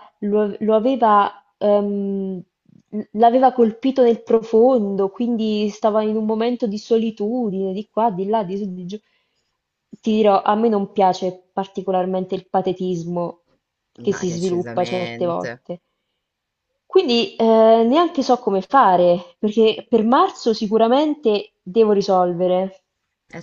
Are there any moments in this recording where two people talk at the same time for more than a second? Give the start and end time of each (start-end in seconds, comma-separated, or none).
14.1-15.5